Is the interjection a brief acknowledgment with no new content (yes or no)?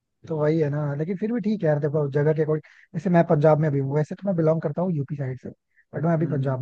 yes